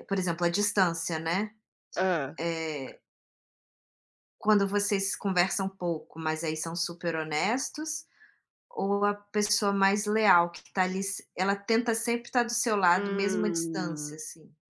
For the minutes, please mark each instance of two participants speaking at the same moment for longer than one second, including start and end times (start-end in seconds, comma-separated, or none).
12.9-14.2